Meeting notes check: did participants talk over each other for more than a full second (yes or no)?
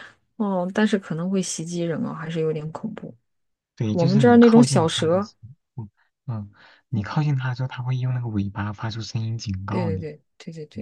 yes